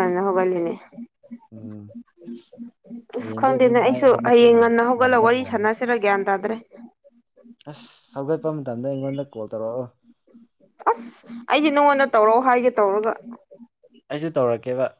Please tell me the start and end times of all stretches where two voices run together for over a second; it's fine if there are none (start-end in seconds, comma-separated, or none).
3.2-5.7